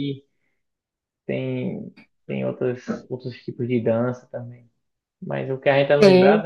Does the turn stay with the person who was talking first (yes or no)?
yes